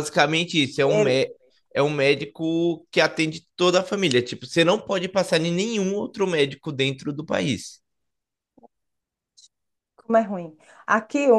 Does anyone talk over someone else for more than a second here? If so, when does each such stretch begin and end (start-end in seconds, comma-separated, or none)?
none